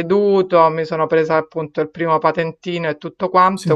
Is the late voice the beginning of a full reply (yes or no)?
no